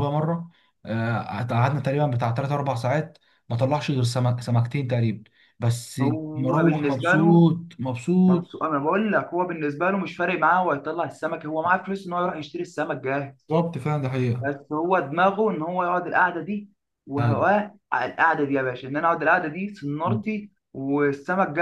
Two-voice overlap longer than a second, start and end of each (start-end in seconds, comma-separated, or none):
6.0-7.4